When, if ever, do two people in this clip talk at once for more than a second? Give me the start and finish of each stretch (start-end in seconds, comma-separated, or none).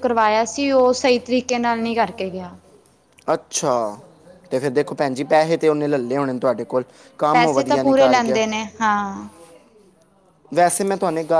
none